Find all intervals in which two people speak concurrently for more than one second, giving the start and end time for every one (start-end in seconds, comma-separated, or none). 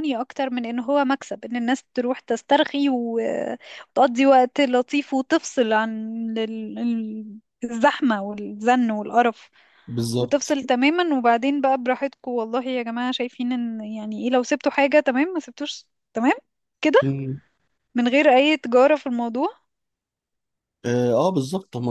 none